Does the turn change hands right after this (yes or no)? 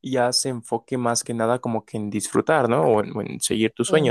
yes